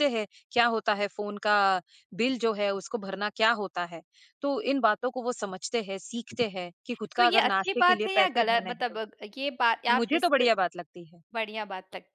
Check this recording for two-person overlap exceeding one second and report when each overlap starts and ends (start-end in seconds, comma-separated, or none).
7.2-9.0